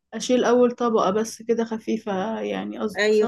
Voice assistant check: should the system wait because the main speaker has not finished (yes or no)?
no